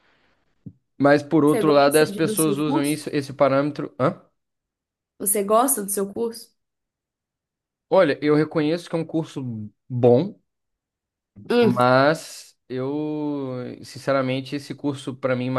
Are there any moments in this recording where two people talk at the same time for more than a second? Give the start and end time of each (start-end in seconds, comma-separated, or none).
1.4-3.0